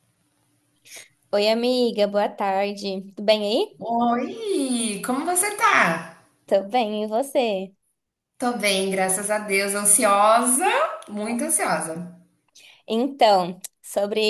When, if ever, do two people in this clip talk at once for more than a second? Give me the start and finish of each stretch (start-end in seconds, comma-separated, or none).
none